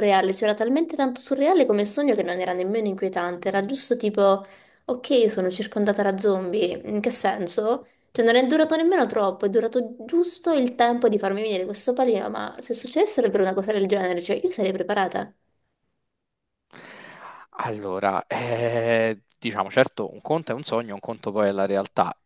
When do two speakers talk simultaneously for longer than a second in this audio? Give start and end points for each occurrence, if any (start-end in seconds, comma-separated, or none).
none